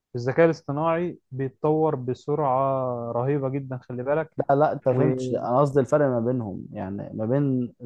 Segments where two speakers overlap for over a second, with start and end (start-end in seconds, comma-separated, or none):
none